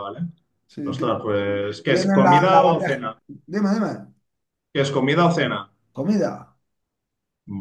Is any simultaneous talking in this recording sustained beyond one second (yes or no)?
yes